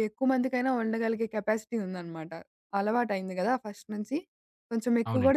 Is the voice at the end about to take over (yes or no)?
no